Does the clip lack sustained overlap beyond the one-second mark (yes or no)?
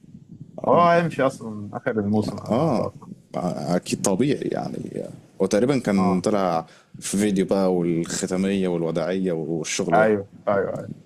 yes